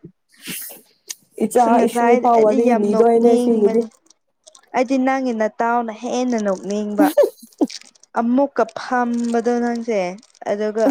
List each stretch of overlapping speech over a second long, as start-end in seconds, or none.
1.6-3.8